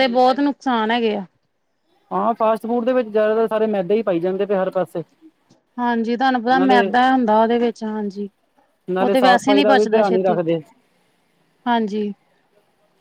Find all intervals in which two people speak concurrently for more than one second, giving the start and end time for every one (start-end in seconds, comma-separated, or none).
9.0-10.4